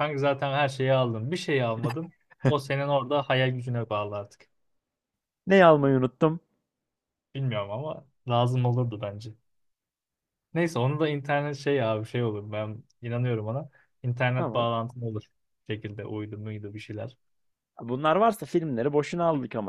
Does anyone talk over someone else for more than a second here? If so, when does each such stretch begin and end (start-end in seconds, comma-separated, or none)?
none